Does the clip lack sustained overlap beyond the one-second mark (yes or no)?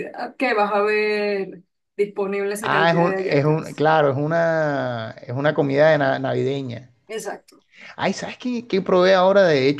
no